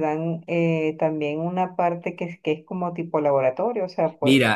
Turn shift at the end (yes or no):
yes